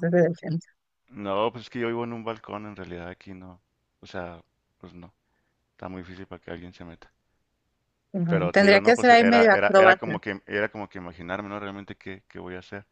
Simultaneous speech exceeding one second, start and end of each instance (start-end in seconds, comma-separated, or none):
8.3-10.2